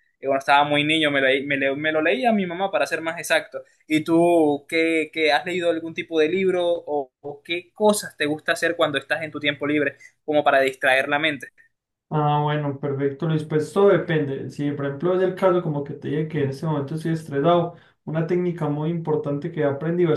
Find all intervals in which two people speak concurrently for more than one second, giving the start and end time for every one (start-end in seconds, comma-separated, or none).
none